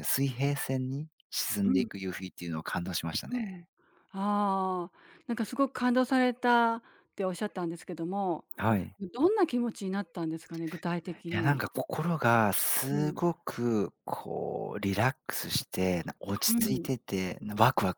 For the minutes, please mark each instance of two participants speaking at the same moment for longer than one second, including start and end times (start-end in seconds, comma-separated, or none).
none